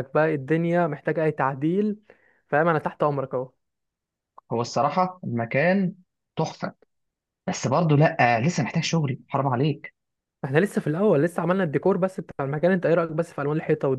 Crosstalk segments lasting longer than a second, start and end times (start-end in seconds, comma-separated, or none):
none